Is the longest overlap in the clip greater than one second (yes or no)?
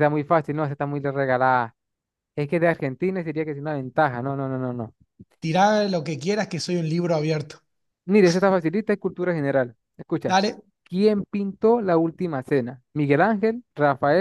no